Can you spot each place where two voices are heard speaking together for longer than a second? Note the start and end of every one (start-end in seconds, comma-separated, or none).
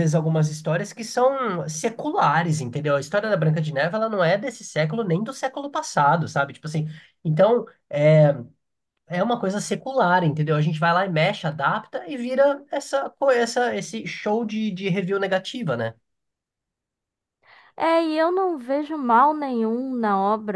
none